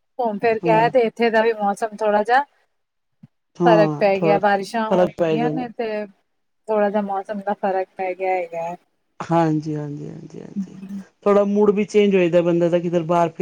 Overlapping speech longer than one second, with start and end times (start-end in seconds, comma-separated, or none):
3.7-5.6